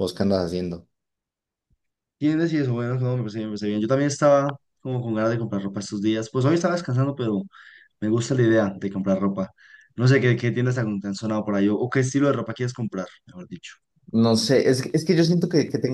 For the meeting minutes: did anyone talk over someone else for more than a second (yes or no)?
no